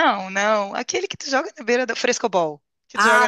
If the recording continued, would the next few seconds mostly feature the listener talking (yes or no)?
yes